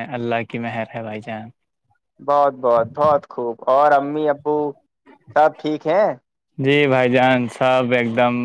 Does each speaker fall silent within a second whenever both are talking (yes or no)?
yes